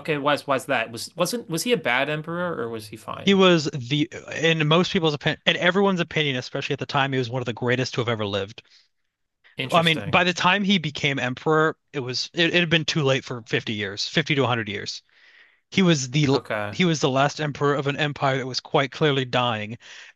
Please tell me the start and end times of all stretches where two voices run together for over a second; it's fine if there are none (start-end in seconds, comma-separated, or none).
none